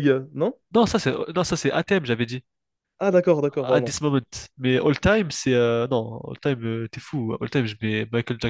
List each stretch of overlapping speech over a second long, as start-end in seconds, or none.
none